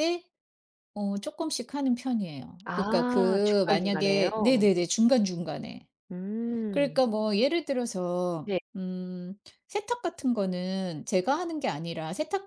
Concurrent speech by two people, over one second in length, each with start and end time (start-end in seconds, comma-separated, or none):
2.6-4.3